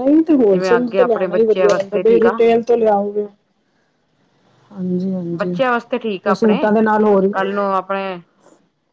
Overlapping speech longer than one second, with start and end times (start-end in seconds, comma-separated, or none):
0.5-2.4